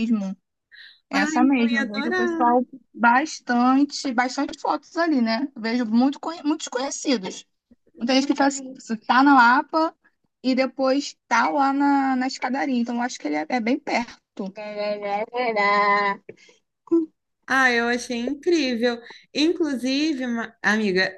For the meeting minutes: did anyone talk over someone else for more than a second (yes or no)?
yes